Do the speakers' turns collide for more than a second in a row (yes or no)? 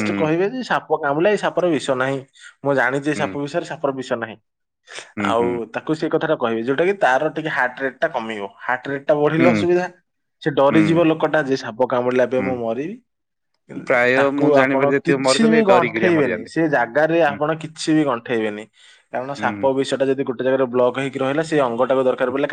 yes